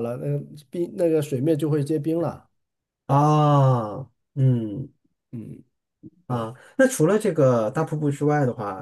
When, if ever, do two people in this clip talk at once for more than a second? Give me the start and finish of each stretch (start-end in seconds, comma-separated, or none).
none